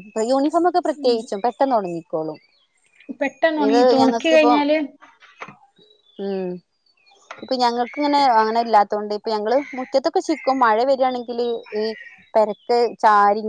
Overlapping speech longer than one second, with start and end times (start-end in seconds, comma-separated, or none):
none